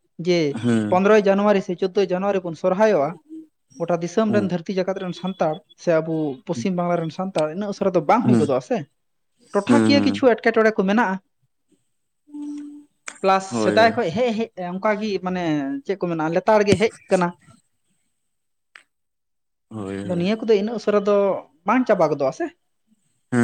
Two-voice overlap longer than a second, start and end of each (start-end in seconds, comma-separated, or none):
none